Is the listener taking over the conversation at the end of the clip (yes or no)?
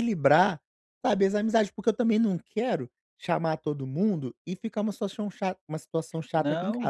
yes